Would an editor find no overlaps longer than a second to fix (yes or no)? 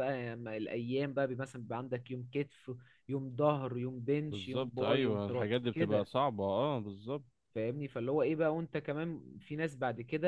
no